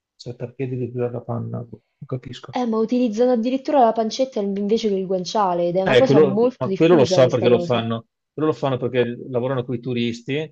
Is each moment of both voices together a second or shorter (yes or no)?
no